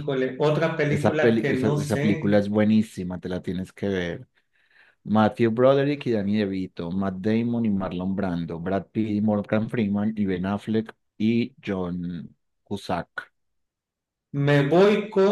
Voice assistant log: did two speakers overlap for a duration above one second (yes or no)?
yes